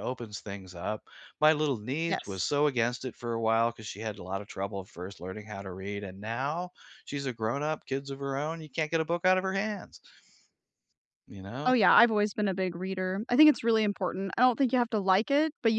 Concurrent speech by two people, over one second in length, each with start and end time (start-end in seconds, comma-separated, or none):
none